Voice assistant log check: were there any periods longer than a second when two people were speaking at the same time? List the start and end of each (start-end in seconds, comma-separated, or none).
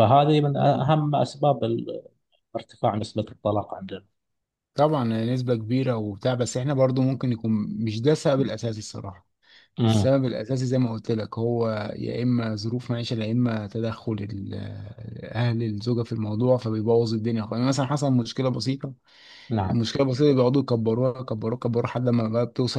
none